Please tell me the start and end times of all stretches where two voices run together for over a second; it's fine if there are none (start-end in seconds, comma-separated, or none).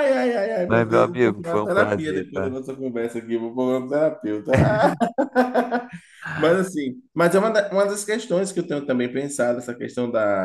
0.7-2.6